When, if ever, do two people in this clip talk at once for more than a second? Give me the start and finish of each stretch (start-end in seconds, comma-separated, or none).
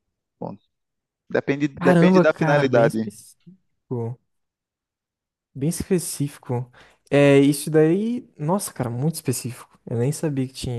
1.8-3.1